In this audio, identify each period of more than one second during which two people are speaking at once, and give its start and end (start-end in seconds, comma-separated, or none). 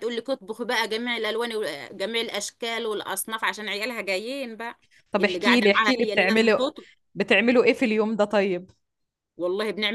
5.2-6.6